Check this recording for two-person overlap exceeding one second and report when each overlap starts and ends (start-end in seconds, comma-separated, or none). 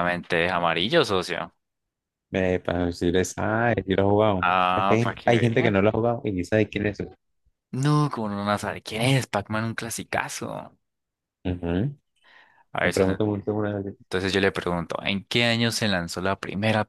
4.4-5.8